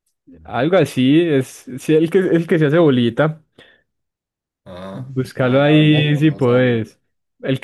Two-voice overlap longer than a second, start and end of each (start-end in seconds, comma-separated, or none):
4.9-6.8